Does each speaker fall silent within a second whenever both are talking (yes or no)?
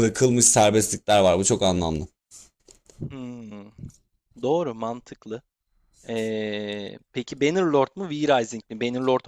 yes